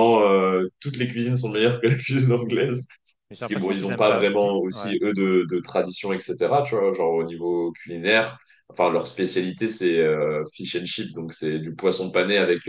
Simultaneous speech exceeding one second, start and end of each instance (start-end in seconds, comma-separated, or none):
3.4-4.9